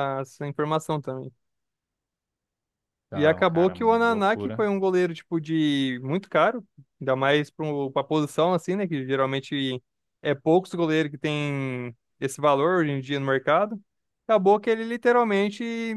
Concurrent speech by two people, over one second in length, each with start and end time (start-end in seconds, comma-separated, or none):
3.1-4.7